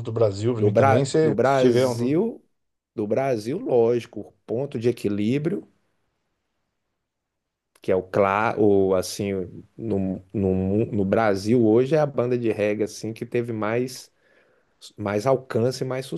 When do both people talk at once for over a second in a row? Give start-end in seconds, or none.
0.6-2.1